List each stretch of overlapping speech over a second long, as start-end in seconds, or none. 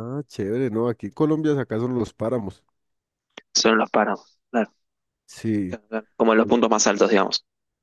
none